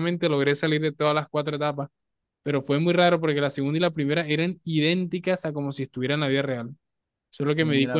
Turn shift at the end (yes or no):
no